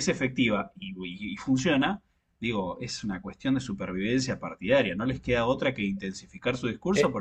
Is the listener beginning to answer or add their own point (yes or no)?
yes